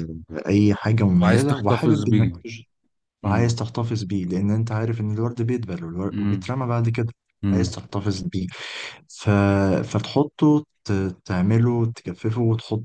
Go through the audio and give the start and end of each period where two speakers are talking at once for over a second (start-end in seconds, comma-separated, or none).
1.1-2.3